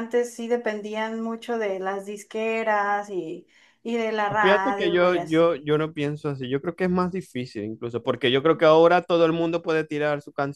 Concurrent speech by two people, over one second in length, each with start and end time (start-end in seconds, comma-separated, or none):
4.4-5.6